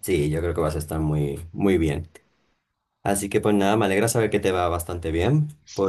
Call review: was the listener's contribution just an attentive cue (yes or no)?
yes